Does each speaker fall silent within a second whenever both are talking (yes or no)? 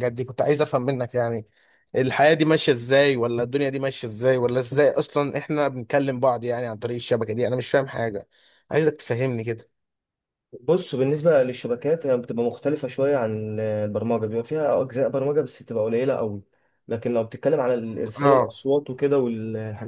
yes